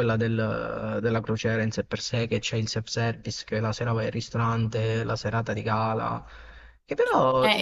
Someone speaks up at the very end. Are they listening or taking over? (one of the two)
taking over